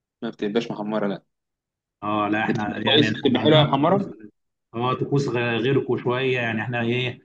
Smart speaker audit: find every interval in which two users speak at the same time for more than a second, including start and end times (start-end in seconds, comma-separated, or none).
2.5-4.0